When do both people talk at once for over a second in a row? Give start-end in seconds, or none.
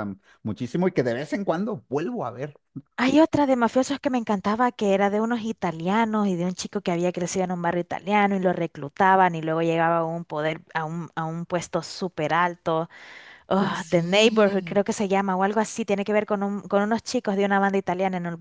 13.6-14.8